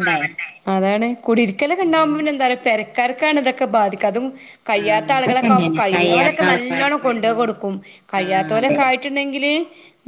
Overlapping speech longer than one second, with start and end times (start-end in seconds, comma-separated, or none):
4.8-7.4